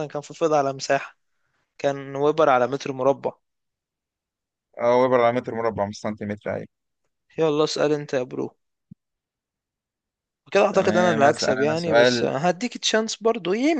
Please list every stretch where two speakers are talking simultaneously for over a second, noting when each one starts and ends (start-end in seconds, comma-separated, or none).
10.7-12.3